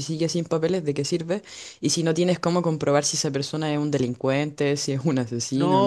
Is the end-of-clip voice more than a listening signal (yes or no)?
yes